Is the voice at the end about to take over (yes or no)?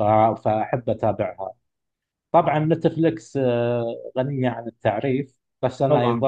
no